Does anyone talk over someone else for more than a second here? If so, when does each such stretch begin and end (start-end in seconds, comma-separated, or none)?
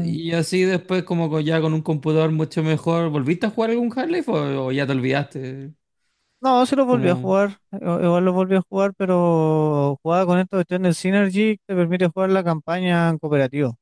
none